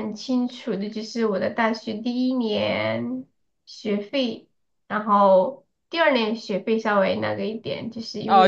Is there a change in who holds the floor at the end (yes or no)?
yes